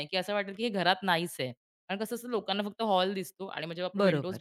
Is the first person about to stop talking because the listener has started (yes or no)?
no